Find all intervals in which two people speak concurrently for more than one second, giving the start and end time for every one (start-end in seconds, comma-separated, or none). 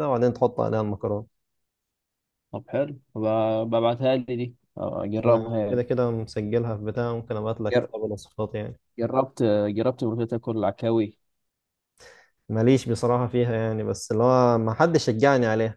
none